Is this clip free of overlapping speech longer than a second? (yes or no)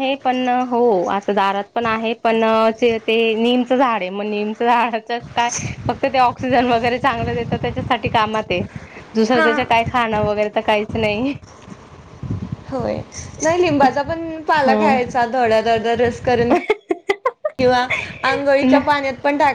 yes